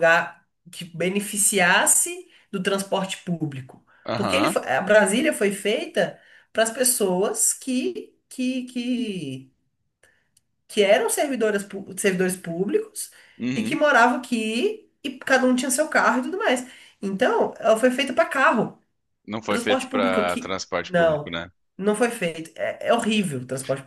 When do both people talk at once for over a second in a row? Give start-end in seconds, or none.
19.5-21.4